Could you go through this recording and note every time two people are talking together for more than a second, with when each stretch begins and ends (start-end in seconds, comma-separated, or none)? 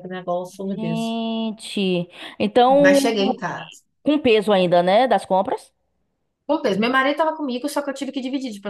none